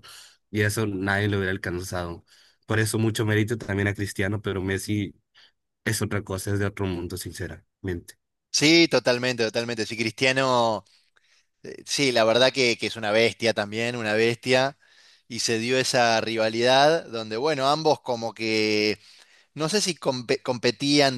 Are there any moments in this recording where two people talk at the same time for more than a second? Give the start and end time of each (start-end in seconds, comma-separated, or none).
none